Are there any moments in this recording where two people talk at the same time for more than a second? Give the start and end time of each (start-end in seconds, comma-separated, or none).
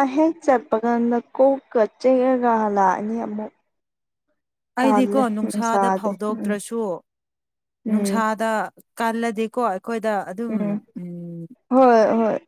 4.8-6.5